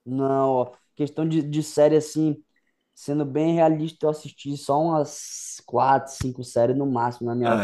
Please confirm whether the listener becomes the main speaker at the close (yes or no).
no